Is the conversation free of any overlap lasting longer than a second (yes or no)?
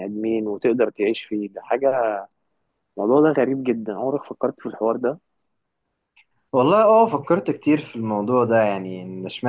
yes